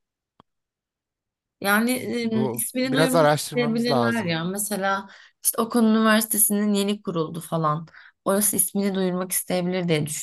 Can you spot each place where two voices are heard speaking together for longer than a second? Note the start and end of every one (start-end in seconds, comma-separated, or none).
2.2-4.3